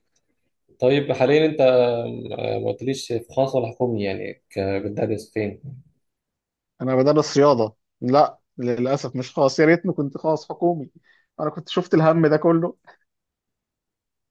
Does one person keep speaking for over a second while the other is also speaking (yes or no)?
no